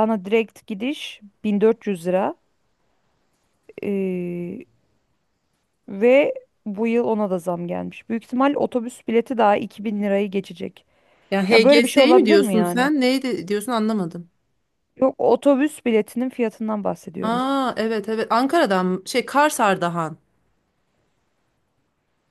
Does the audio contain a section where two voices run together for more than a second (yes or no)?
yes